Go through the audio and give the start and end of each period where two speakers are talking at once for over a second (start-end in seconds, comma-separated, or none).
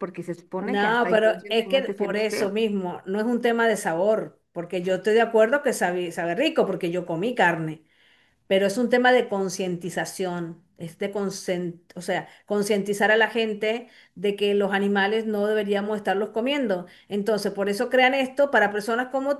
0.6-2.5